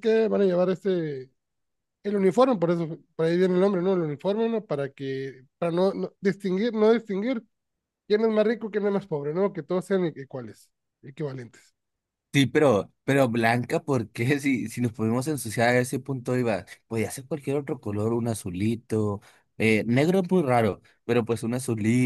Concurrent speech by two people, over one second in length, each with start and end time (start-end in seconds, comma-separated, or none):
none